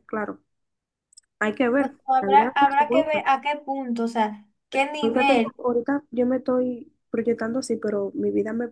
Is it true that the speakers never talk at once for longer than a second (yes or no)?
no